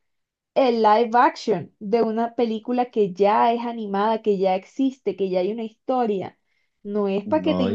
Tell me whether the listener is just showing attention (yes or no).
yes